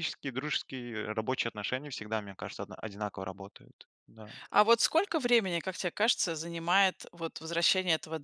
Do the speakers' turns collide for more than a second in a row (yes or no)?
no